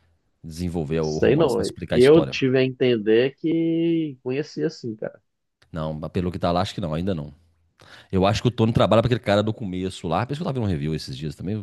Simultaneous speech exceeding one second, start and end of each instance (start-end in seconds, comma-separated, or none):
1.0-2.4